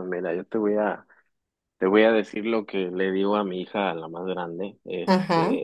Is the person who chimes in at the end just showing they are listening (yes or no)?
yes